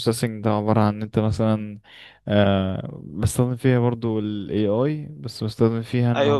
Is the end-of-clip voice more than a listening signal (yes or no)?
yes